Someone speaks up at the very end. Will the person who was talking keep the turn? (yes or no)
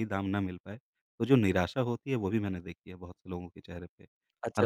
no